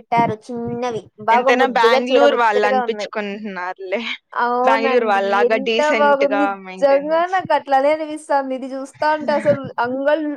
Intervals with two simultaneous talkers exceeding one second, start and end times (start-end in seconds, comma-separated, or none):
1.3-3.1, 4.7-7.3